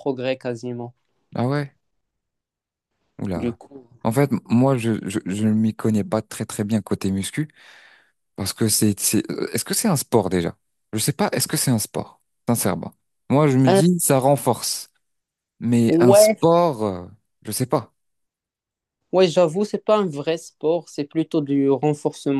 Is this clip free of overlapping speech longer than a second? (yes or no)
yes